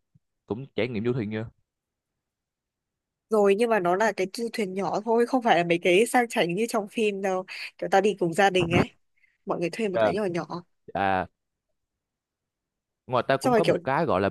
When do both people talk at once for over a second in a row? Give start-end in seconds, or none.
none